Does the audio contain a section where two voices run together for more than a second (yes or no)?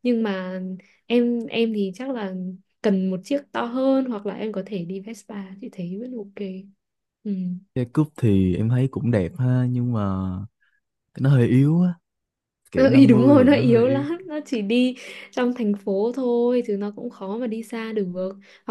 yes